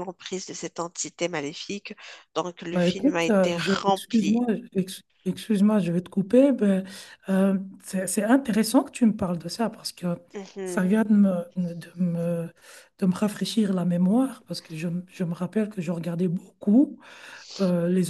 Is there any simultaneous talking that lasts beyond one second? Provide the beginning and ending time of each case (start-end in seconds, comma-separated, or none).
2.7-4.4